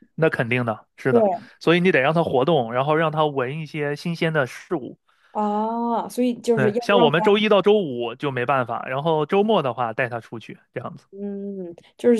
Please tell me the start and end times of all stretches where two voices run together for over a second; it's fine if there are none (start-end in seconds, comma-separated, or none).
none